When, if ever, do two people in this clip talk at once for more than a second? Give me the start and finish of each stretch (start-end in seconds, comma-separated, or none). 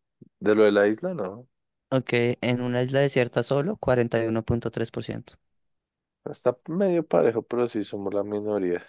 none